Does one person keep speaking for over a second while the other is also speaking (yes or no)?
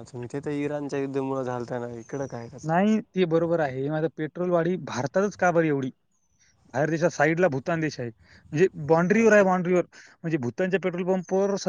no